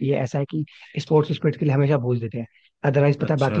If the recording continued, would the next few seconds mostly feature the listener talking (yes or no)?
no